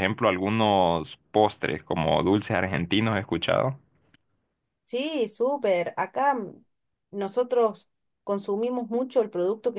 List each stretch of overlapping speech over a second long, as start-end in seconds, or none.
none